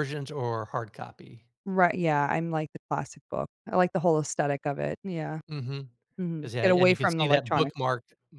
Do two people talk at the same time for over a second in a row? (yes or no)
yes